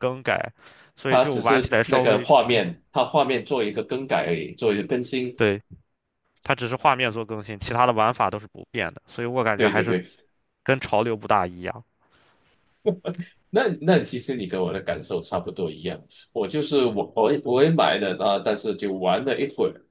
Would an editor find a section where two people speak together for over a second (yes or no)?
yes